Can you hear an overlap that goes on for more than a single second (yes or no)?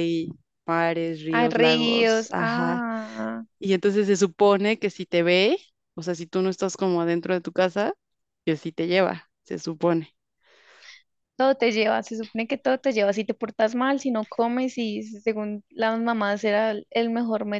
yes